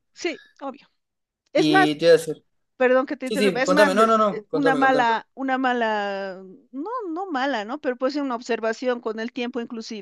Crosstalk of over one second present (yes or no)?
yes